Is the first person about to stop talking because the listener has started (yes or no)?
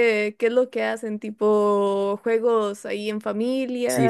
yes